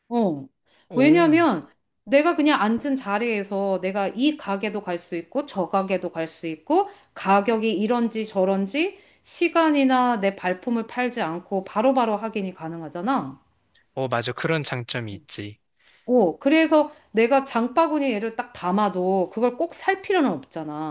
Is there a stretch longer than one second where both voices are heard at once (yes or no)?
no